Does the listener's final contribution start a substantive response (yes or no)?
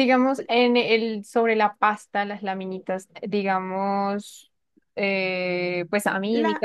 no